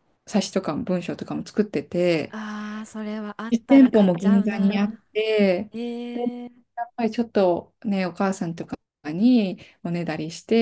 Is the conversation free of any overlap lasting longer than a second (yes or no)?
no